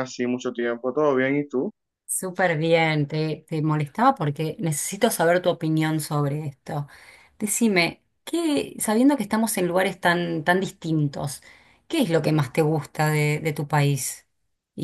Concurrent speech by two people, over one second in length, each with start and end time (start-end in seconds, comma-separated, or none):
none